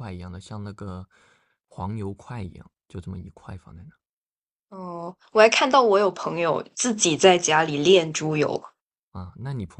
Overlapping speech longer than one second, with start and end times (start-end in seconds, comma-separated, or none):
none